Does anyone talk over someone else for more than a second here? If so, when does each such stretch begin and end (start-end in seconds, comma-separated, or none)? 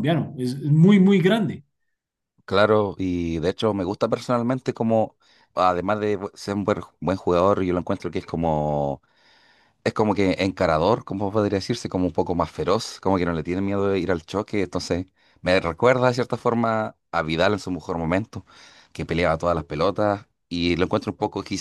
none